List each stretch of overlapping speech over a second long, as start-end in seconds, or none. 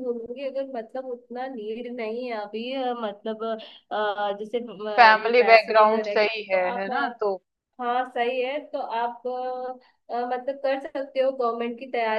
4.9-6.9